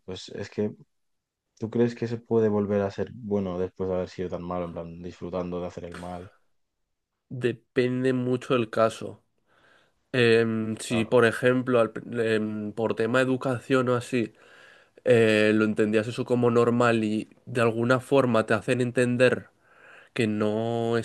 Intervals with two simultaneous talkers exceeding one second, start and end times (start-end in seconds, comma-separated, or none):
none